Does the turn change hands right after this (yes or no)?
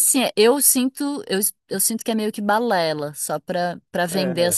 yes